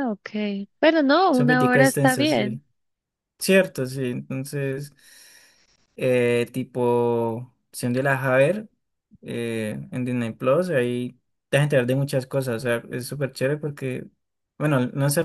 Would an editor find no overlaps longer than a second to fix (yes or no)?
no